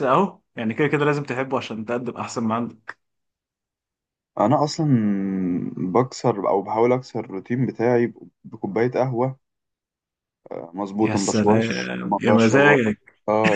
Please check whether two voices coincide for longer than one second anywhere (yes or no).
yes